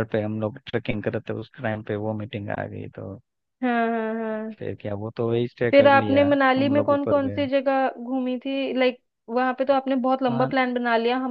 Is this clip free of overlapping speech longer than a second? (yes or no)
no